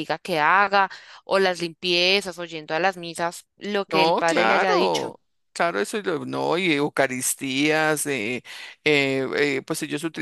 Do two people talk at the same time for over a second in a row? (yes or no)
yes